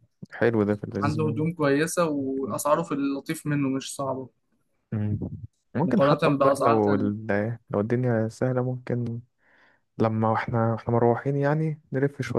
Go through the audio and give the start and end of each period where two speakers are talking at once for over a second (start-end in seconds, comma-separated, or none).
5.8-7.1